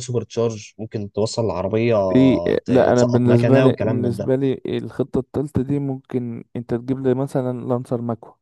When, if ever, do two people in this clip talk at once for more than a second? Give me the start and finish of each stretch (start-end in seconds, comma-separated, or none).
2.6-4.3